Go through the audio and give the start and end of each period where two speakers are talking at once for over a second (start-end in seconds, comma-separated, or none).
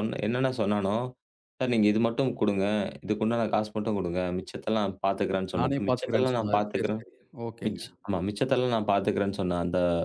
5.6-7.0